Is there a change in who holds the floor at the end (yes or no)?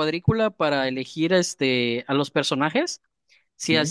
no